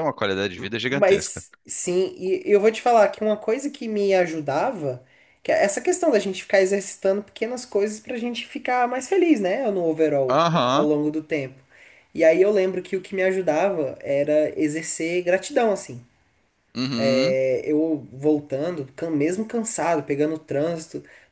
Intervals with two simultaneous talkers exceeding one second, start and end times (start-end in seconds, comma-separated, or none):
none